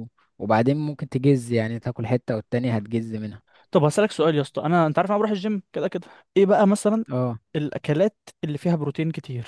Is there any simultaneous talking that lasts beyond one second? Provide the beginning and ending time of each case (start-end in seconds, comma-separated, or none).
none